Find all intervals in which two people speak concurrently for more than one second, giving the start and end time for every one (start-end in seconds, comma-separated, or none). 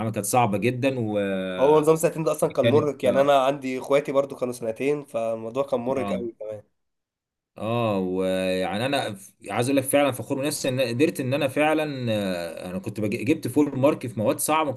none